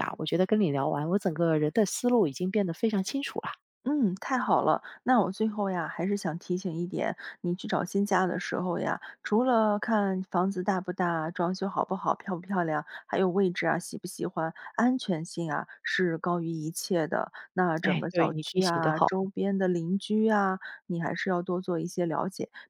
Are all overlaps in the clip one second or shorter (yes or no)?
no